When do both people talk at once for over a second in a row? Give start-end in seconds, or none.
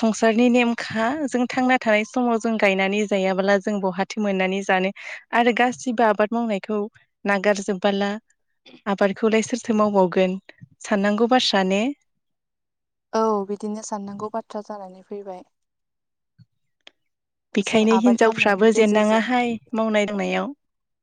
17.7-19.2